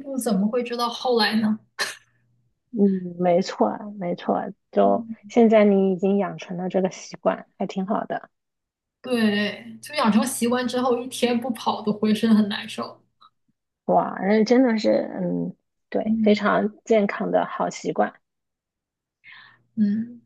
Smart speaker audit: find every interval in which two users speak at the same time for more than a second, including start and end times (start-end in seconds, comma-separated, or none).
none